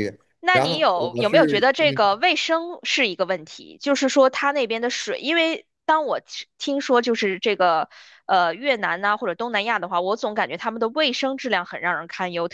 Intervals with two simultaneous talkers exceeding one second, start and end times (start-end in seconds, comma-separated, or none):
0.5-2.2